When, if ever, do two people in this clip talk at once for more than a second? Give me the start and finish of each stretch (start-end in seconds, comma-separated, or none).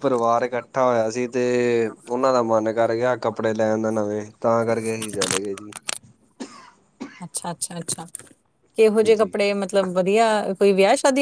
none